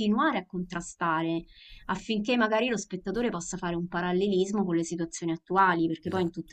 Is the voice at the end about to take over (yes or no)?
no